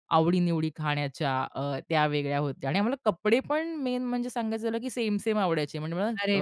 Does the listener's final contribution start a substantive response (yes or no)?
no